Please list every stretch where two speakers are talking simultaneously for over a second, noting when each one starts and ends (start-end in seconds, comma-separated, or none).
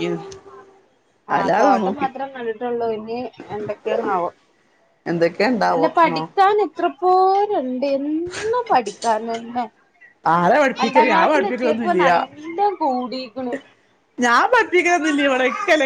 10.8-12.1